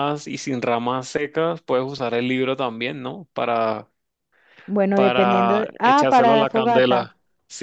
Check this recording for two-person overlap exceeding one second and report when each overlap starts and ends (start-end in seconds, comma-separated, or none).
4.9-7.1